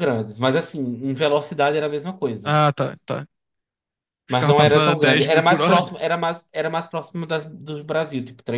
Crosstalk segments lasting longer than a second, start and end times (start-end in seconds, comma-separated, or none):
4.3-5.8